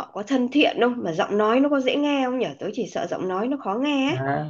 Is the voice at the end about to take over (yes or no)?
yes